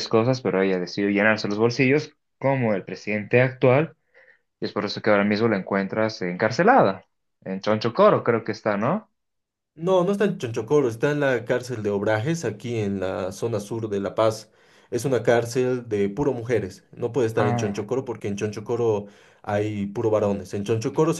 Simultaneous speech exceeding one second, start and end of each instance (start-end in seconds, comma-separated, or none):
none